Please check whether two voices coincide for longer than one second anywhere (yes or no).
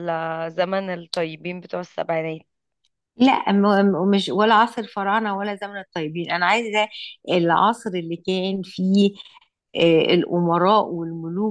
no